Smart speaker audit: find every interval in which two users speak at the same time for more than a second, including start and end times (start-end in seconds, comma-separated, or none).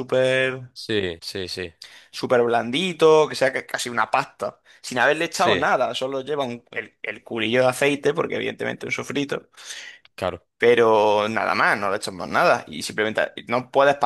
none